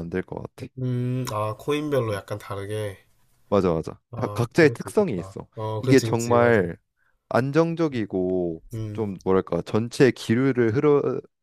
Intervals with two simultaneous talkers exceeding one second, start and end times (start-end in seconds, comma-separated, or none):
4.1-6.6